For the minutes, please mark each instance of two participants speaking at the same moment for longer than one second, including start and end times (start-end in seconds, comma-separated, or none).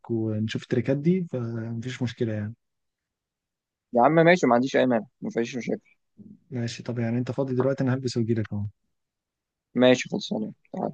none